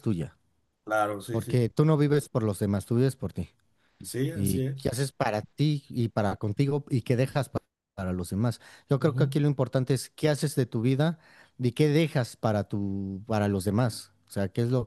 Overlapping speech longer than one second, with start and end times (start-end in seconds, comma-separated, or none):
none